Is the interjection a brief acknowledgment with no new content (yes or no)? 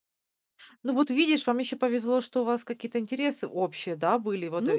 yes